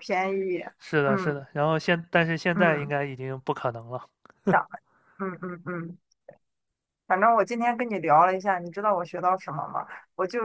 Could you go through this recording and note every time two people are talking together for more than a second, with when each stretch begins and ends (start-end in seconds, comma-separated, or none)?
none